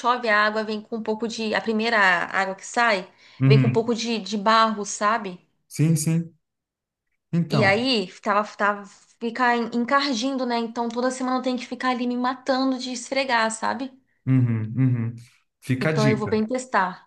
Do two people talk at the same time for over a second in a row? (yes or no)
no